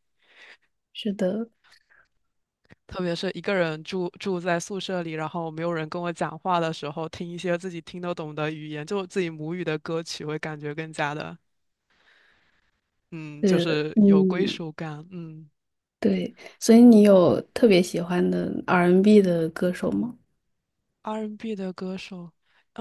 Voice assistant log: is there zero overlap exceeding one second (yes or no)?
no